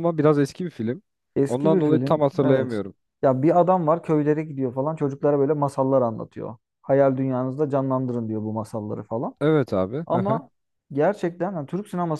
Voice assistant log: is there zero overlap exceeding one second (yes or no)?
no